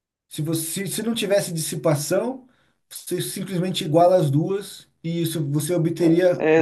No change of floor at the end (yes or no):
no